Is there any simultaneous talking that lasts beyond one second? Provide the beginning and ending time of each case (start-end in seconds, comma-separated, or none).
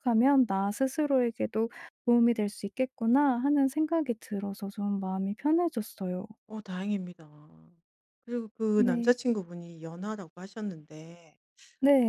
none